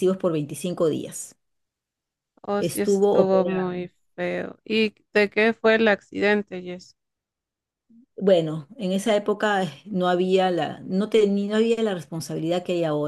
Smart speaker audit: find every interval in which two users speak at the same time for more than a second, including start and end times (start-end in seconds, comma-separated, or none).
2.6-3.8